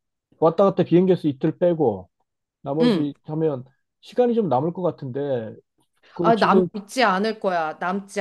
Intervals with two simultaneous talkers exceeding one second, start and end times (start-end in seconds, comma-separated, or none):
none